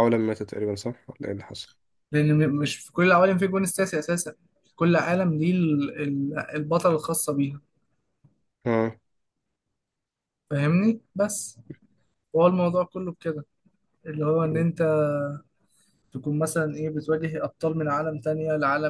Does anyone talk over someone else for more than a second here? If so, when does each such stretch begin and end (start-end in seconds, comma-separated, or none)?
none